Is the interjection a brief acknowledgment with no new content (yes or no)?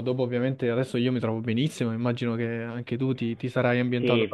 no